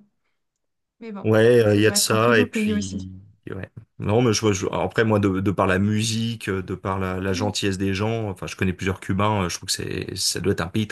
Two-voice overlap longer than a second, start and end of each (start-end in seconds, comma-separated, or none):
1.2-3.1